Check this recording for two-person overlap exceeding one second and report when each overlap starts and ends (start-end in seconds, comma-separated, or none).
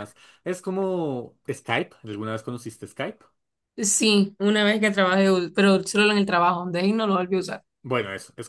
none